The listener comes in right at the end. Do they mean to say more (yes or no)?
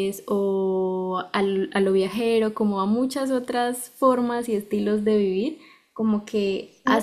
no